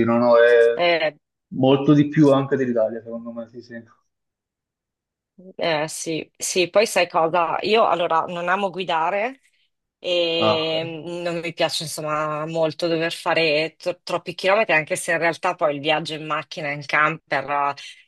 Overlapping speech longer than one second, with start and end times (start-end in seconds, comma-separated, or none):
none